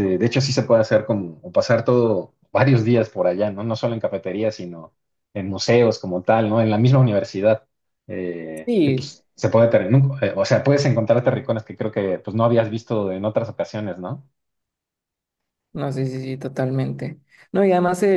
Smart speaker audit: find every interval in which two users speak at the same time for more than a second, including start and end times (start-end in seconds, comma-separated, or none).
none